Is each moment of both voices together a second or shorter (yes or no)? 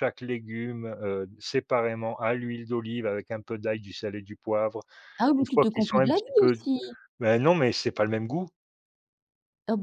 no